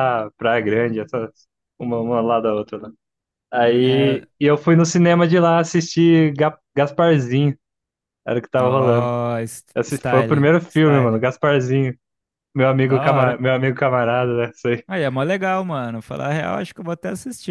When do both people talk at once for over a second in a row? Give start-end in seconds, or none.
9.7-11.2